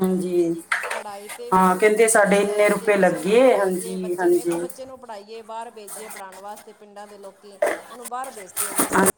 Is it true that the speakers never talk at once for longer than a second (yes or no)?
no